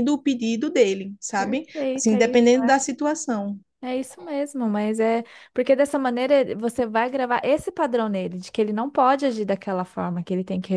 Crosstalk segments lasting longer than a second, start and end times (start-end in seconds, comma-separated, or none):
1.4-2.8